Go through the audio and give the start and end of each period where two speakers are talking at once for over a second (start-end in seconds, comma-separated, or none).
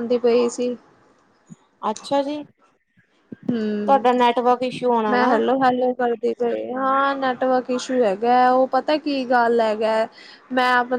none